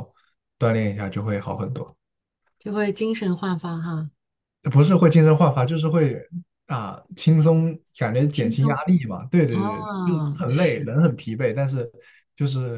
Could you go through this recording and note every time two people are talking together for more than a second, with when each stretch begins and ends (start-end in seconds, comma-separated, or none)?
9.5-11.0